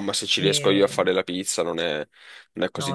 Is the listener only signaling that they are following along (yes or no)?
no